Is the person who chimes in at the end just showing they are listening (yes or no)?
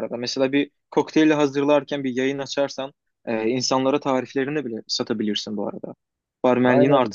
no